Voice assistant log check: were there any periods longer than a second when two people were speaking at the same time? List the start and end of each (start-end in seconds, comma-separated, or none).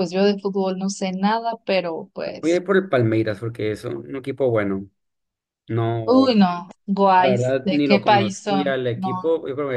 7.2-9.1